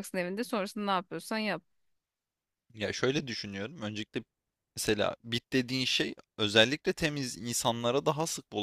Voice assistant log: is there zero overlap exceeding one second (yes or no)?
yes